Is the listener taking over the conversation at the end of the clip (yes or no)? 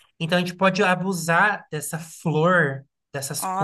no